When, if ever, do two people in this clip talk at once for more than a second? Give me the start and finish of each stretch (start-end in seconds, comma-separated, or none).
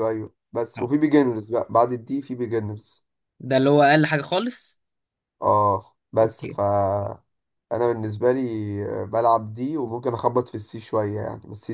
none